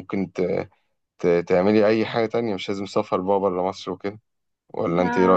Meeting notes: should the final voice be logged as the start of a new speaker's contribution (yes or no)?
yes